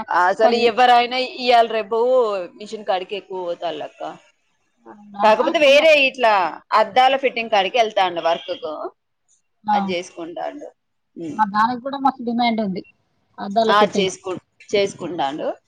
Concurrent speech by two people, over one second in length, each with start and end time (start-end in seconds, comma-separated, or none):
none